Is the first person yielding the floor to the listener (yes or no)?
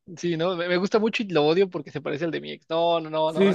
yes